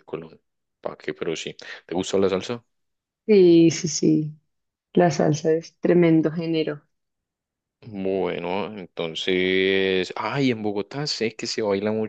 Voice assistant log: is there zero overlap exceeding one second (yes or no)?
yes